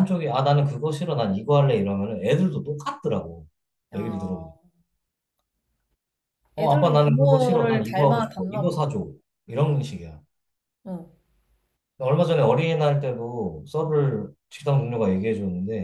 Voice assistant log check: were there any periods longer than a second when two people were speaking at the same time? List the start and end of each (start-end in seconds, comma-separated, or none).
6.6-8.8